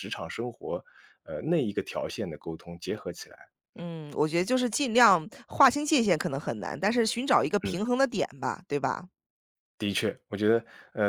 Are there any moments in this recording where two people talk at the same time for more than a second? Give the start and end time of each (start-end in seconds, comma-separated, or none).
none